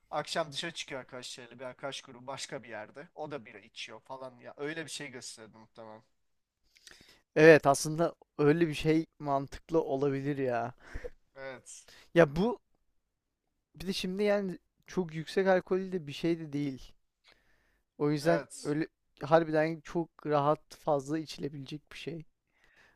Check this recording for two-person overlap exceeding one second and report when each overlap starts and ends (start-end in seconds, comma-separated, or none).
none